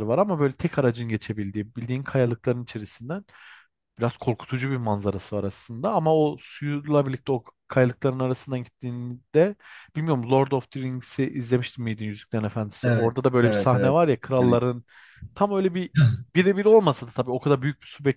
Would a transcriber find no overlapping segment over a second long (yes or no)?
no